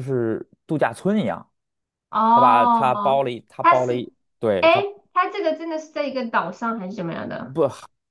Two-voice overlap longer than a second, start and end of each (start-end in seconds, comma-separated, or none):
none